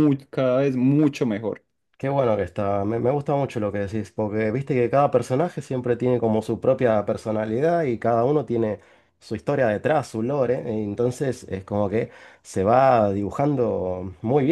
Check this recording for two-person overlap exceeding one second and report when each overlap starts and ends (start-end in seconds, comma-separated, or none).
none